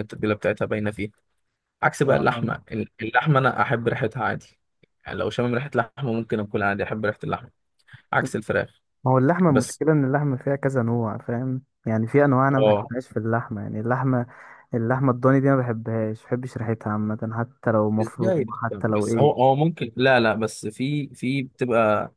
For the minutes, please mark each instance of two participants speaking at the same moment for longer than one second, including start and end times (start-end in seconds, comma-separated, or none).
18.0-19.4